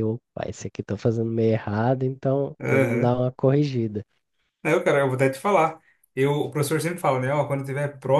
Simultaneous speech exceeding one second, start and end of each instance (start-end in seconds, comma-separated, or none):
none